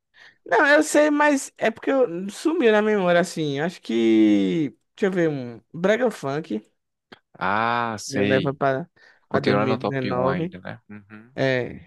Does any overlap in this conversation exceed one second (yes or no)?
yes